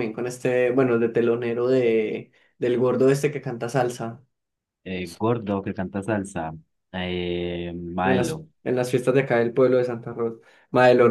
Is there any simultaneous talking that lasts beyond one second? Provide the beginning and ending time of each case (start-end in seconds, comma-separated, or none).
none